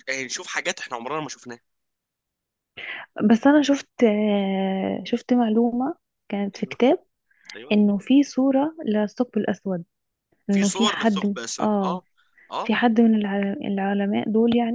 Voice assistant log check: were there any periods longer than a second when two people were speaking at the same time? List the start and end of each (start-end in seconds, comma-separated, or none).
10.5-12.0